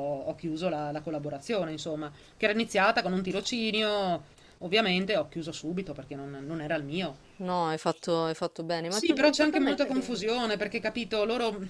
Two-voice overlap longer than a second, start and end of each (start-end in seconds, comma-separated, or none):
8.9-10.2